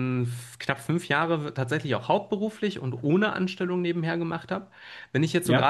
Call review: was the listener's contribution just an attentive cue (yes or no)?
yes